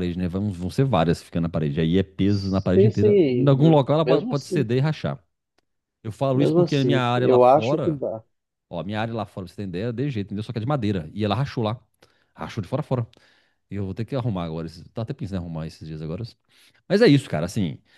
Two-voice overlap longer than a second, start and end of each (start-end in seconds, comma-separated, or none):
2.2-4.7, 6.3-8.0